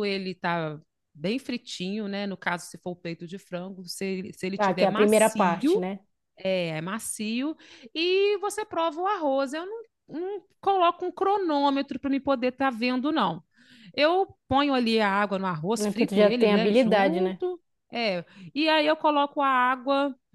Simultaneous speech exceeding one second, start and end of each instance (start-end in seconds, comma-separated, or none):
4.5-5.8, 15.8-17.4